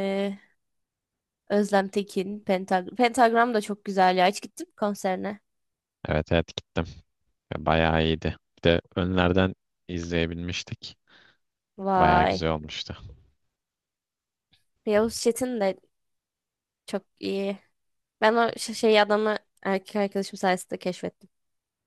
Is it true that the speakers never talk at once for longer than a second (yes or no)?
yes